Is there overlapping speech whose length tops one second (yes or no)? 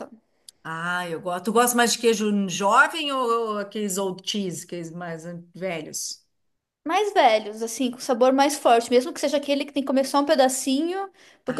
no